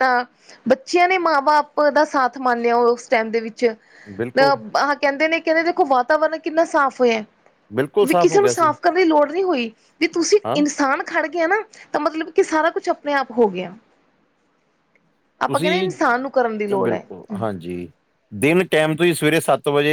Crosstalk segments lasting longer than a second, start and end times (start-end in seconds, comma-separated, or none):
none